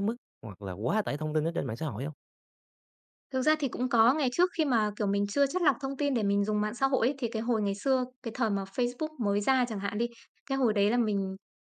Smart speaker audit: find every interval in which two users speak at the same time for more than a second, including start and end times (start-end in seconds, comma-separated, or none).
none